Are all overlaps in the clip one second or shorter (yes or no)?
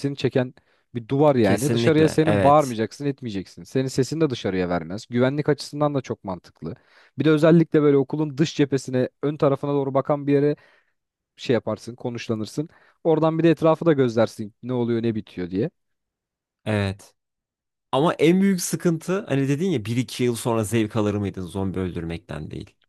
no